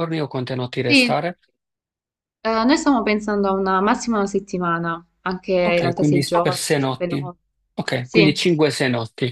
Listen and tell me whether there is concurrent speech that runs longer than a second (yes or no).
yes